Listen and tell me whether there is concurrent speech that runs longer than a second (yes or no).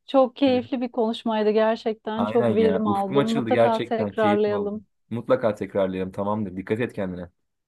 yes